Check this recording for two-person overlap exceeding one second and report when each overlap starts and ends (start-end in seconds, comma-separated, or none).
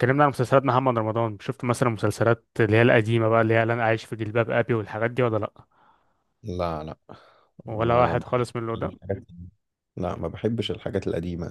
7.7-8.9